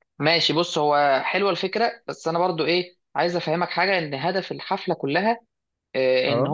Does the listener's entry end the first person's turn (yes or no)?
no